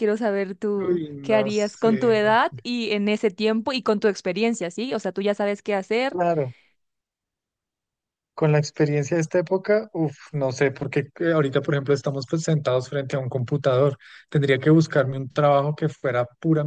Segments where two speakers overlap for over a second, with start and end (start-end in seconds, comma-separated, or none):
0.8-2.6